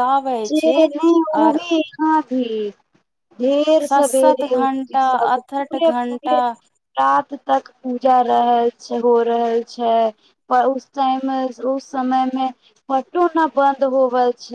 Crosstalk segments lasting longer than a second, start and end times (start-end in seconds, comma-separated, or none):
3.9-6.4